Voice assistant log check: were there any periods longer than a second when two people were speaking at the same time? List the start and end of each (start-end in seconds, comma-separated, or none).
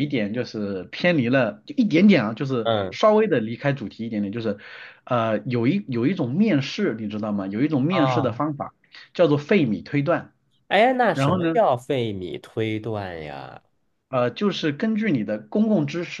none